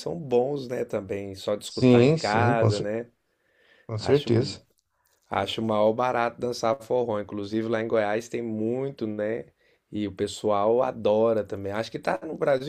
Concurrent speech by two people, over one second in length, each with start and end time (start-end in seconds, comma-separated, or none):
1.6-2.9